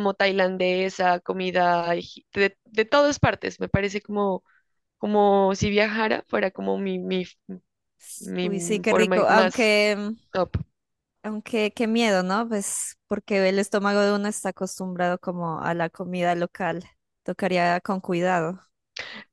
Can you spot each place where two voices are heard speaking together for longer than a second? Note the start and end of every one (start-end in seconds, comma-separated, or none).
8.4-9.8